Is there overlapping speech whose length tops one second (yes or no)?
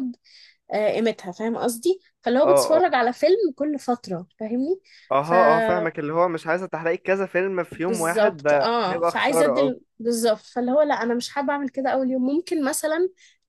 yes